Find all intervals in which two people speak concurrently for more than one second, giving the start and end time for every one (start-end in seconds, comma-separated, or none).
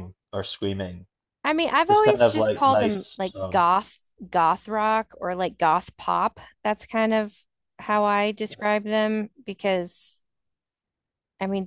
1.9-3.6